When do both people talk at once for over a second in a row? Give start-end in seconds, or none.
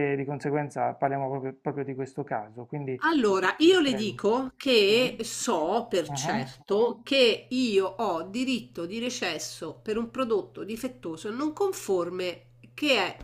none